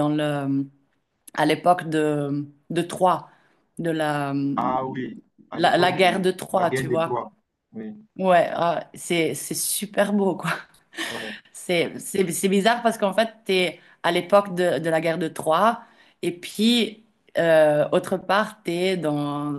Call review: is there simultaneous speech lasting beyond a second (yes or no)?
yes